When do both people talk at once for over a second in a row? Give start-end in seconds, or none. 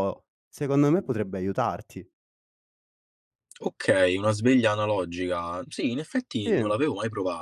none